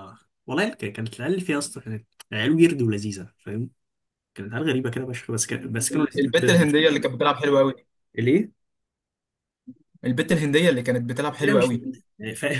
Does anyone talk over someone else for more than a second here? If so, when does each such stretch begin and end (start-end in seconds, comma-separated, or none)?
none